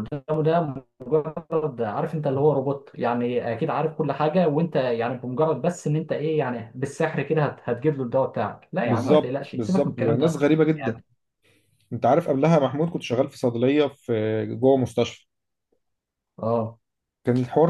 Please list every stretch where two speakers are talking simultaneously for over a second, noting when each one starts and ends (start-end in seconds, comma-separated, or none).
8.8-11.0